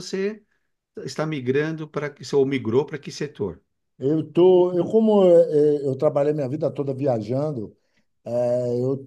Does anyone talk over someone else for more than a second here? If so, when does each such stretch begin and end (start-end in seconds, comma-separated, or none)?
none